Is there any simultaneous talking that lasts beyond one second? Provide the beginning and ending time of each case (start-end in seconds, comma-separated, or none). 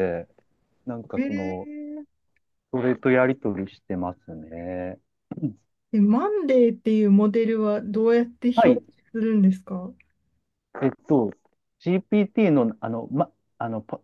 none